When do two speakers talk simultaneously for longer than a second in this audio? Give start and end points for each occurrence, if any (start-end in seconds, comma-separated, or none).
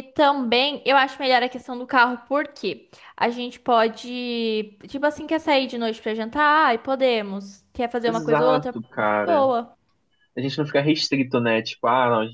8.1-9.5